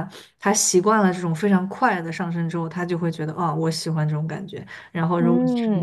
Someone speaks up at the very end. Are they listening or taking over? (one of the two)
taking over